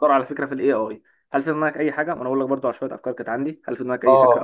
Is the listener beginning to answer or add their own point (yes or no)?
yes